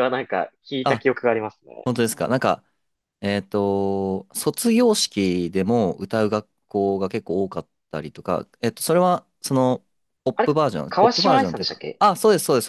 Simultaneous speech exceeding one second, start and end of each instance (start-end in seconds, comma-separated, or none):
10.3-12.0